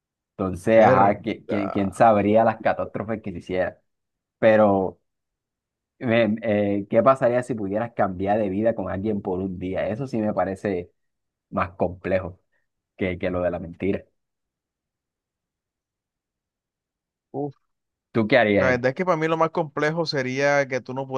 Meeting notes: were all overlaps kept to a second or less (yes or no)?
no